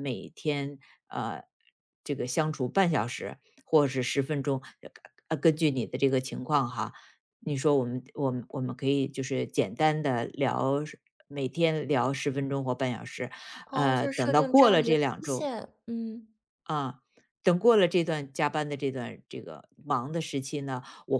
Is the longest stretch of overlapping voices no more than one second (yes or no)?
no